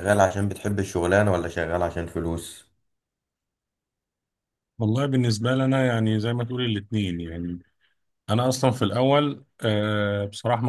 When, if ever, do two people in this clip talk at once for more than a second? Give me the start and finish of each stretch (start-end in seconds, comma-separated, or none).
none